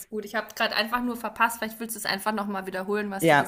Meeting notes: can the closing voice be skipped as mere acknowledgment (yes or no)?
no